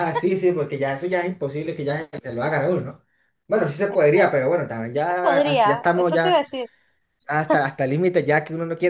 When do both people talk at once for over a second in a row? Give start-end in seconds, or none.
4.9-6.4